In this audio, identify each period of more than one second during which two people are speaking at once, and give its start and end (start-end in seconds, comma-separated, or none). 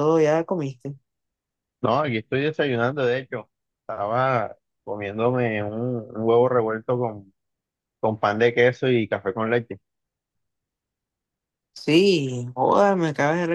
none